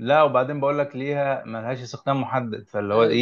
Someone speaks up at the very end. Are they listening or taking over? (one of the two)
taking over